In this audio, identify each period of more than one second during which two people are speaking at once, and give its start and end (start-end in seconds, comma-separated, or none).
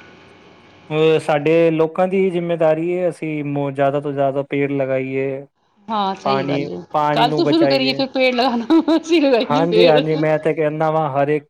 6.2-7.9